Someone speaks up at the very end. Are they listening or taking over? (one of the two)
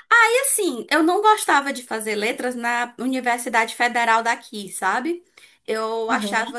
listening